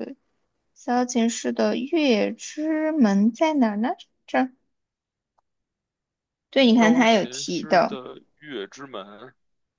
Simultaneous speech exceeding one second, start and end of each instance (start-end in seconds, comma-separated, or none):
6.8-8.0